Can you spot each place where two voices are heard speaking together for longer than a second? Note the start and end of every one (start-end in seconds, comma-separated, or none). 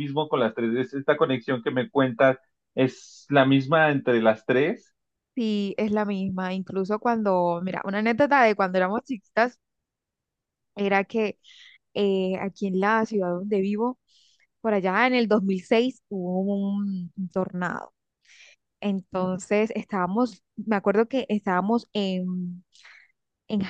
none